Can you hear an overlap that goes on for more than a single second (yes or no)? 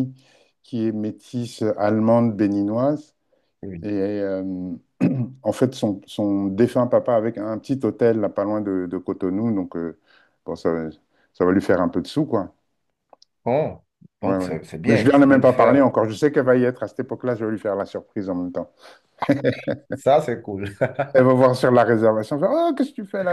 yes